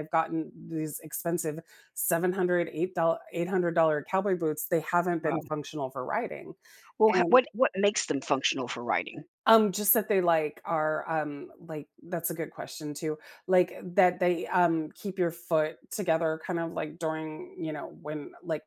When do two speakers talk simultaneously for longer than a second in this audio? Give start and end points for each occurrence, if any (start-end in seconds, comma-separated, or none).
none